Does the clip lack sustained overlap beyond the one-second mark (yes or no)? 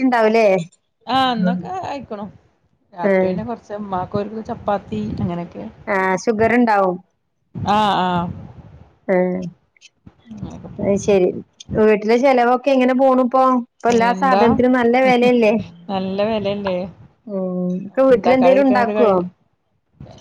no